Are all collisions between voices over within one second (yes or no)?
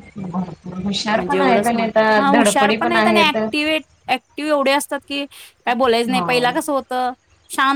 no